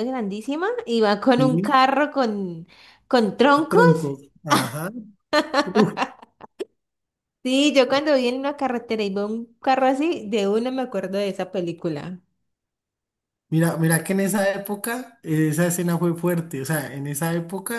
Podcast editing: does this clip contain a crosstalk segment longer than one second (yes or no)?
no